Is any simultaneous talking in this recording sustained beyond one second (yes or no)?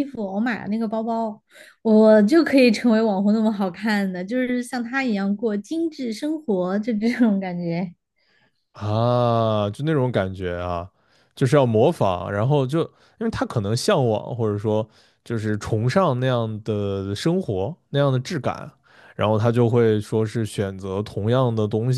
no